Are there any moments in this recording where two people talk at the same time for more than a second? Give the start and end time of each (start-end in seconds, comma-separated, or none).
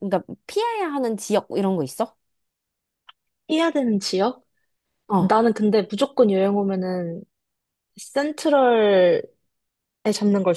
none